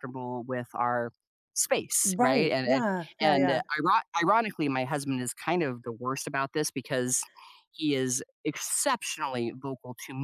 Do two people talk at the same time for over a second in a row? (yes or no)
yes